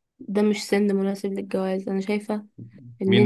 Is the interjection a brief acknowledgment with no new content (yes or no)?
no